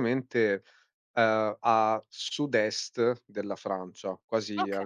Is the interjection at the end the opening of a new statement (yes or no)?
no